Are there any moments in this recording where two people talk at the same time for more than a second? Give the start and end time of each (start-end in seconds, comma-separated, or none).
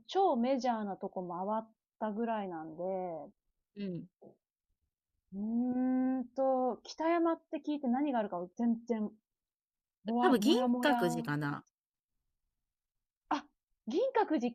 10.2-11.6